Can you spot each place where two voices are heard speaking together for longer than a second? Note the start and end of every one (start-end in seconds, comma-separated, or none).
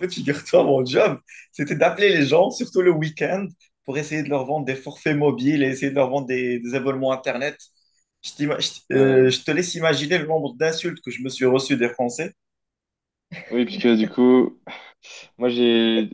none